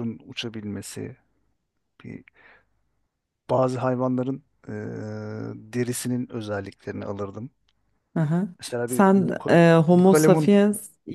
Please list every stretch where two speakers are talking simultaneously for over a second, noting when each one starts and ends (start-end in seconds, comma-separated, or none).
8.9-10.5